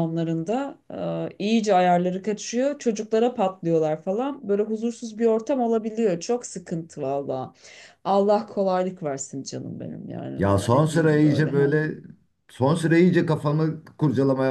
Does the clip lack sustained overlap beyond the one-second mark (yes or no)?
no